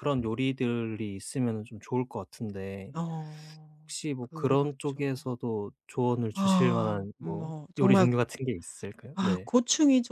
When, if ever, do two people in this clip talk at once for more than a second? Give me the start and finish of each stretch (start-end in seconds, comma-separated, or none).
3.8-5.3, 6.3-8.1